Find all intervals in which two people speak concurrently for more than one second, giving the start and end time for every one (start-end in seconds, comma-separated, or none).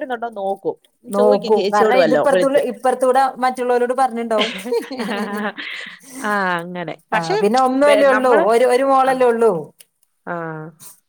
1.2-2.6